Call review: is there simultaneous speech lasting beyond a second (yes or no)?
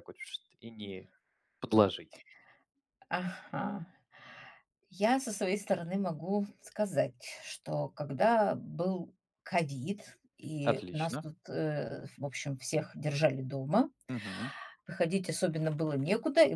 no